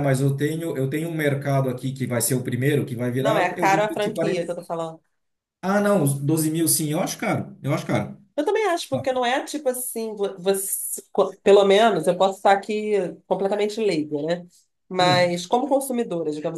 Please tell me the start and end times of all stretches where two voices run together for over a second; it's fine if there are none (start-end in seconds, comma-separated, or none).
3.2-4.5